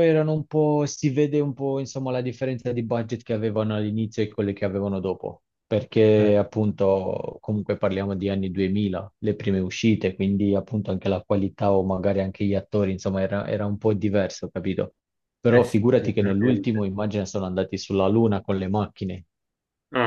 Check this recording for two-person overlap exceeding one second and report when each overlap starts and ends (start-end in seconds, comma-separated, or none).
15.5-16.8